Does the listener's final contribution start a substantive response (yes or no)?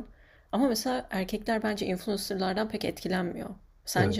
yes